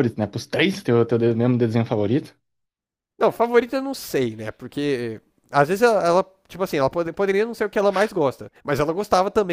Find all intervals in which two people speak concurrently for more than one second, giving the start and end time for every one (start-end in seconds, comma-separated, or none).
none